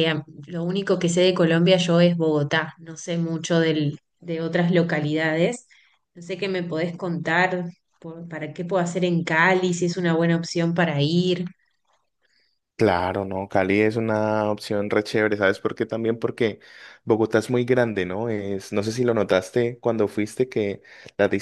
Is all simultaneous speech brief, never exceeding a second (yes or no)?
yes